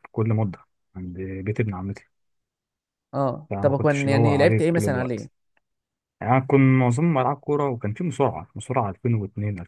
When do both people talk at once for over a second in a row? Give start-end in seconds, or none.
3.5-5.3